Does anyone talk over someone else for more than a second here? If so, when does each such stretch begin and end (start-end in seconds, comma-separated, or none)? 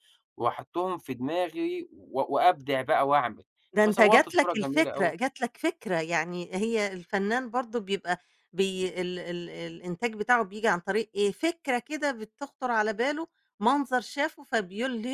3.8-5.1